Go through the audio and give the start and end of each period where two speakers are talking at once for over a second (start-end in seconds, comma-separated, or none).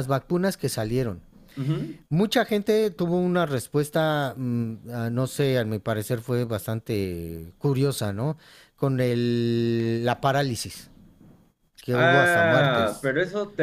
11.9-13.1